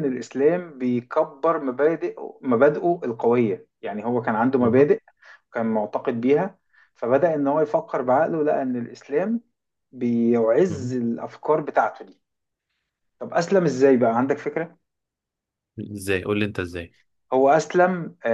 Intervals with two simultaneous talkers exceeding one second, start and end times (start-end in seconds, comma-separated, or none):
none